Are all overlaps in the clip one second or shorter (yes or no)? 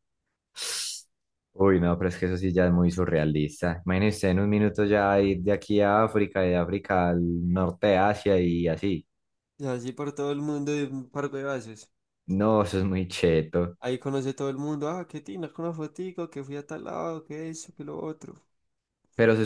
yes